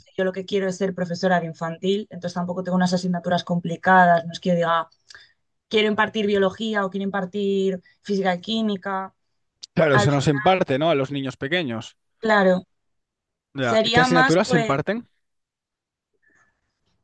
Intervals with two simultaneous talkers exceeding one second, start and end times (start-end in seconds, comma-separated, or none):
13.6-14.8